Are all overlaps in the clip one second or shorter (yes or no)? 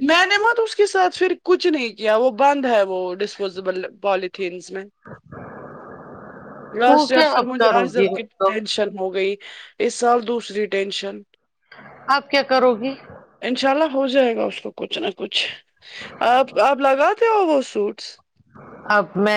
no